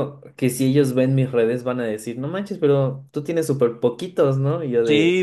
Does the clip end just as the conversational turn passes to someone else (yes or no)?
yes